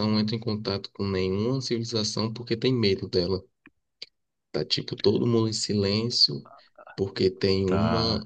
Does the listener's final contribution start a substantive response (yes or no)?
no